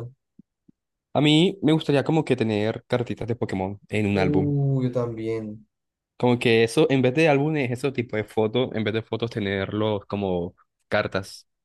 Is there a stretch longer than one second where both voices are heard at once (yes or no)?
no